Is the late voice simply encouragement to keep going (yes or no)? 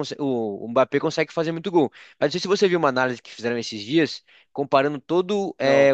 yes